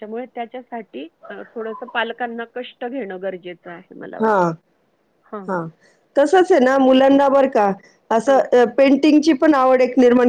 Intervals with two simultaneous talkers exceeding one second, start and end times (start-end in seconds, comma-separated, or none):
none